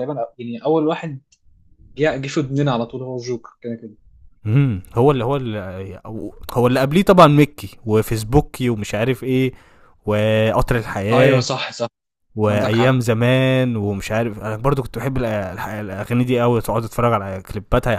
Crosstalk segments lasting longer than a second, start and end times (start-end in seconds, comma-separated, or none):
none